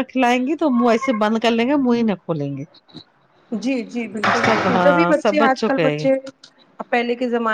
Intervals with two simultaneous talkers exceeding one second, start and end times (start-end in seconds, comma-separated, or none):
4.5-6.0